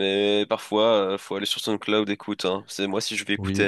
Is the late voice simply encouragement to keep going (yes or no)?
yes